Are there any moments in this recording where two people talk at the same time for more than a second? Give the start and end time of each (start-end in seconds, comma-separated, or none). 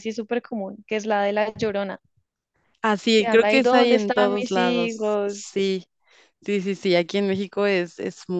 3.1-5.5